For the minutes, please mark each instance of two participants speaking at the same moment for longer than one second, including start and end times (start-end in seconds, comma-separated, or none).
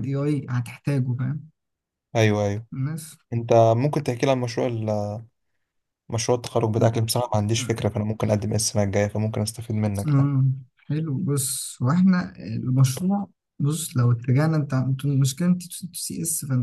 none